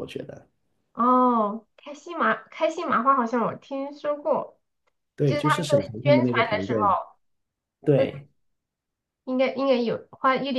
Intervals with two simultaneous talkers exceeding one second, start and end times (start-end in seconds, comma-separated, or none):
5.2-6.8